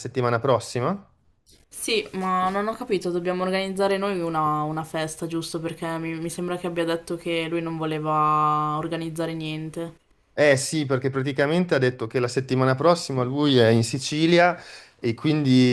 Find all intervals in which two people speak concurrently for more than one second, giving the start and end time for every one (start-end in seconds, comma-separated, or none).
none